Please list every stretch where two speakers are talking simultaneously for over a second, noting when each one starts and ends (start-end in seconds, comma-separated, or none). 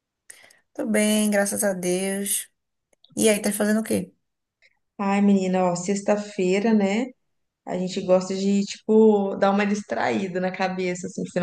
none